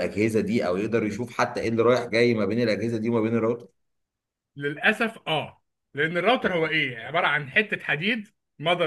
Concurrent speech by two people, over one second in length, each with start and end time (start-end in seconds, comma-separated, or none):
none